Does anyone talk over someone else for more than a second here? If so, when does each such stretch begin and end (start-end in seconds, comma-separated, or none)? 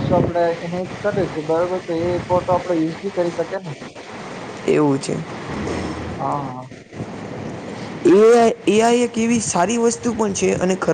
none